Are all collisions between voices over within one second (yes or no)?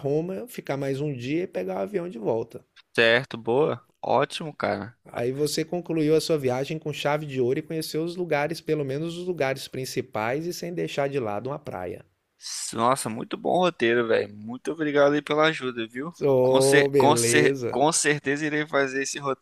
no